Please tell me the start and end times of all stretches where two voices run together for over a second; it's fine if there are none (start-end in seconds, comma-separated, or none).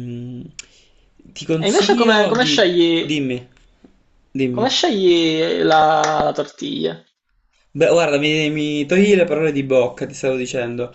1.6-3.1